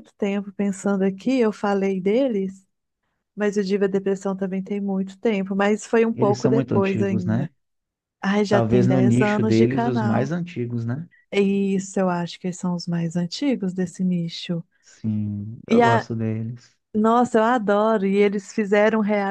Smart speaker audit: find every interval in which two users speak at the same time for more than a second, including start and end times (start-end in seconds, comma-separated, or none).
6.1-7.5, 8.5-10.3